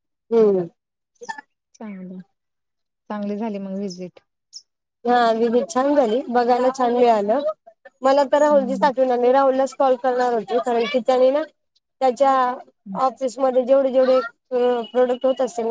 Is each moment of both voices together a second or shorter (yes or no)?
yes